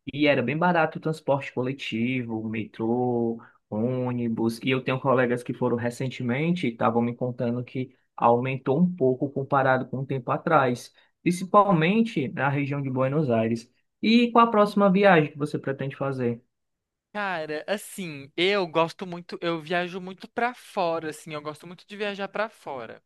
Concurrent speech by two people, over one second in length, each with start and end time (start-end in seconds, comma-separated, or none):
none